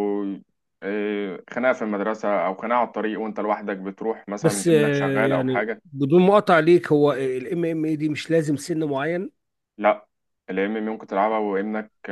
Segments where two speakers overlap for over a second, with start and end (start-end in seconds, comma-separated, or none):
4.4-5.8